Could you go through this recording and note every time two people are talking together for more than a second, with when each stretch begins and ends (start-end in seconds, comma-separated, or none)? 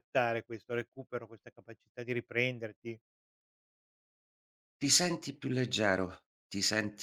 none